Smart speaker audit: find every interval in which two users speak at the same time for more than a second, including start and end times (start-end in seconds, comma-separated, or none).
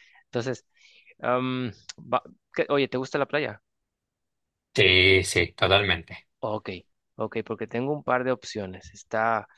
none